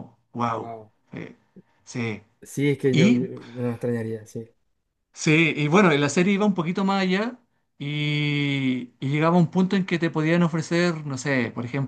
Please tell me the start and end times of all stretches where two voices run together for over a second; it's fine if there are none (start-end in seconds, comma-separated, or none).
none